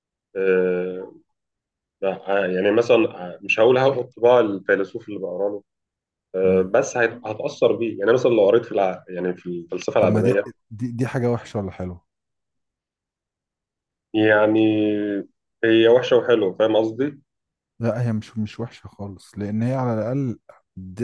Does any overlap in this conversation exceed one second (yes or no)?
no